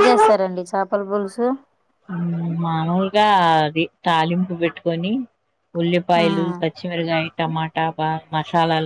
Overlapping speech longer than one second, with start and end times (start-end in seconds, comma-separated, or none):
none